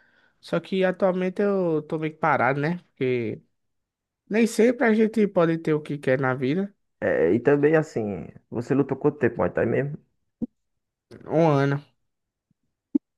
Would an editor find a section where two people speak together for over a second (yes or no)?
no